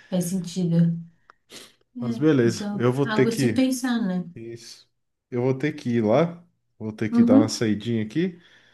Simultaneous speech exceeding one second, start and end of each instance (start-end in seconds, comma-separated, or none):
2.0-3.6